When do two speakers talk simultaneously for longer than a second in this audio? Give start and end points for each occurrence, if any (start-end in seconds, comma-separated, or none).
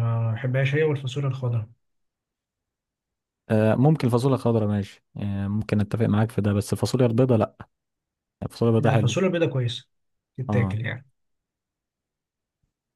none